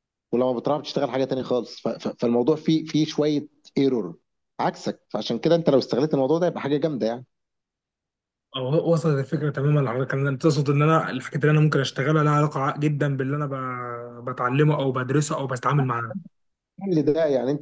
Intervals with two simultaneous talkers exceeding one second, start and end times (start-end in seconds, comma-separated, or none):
none